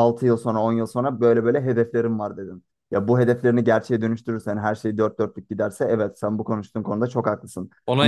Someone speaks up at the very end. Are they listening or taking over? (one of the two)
taking over